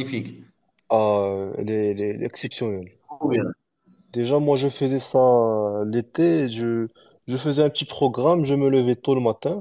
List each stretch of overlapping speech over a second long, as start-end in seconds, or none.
none